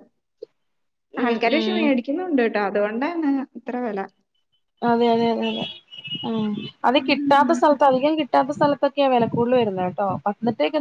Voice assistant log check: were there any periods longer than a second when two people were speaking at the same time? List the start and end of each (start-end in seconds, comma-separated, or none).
none